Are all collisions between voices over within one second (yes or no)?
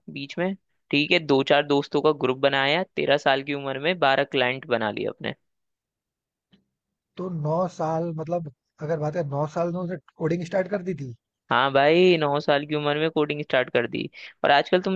yes